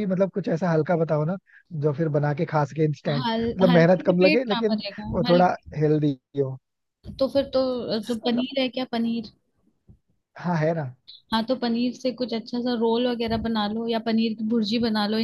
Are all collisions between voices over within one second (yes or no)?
no